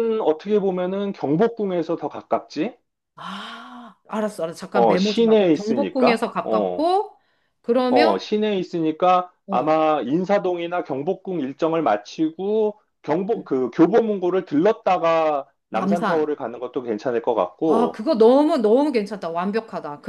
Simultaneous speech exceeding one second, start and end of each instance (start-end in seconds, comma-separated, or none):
4.7-6.8